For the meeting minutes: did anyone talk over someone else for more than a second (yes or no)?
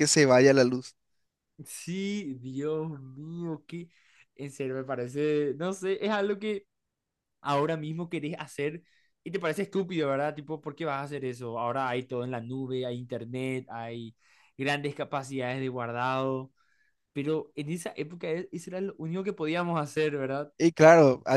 no